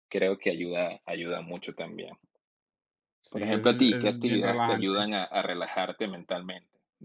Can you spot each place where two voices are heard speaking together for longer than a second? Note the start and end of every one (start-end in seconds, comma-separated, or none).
3.3-5.0